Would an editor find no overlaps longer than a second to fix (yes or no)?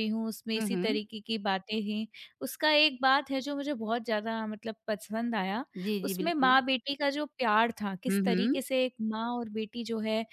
yes